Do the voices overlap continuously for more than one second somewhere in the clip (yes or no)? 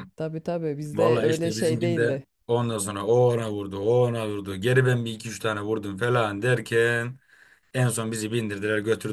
yes